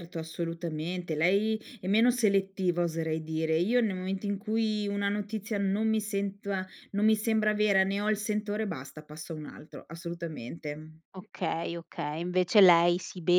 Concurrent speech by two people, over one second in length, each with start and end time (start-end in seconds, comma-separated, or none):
none